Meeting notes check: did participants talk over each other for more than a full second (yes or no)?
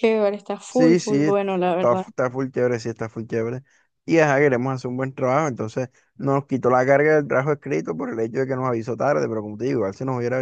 yes